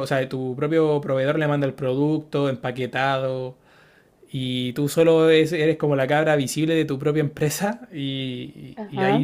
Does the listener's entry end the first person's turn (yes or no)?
no